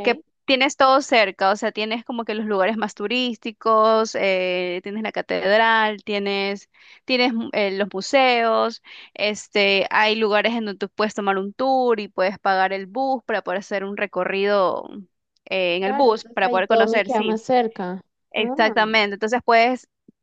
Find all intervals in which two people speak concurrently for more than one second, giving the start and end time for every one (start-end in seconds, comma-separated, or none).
15.8-17.4